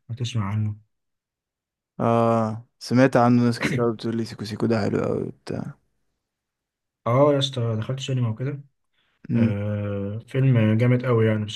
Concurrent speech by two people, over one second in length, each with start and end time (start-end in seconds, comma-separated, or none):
none